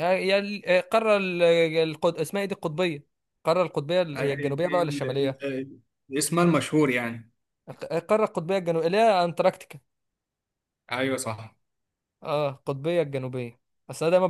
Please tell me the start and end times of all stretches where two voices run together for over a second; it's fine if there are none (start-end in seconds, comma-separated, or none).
4.1-5.4